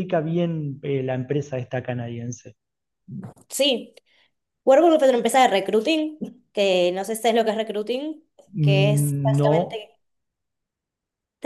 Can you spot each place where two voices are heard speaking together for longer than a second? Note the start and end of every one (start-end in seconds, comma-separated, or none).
8.6-9.9